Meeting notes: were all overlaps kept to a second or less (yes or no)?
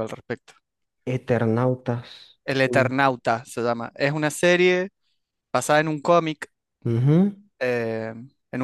yes